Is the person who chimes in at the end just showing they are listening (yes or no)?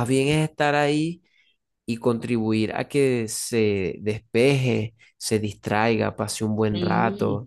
yes